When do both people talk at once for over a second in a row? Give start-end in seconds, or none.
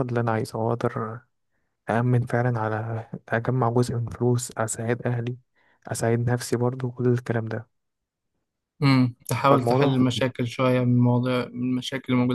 none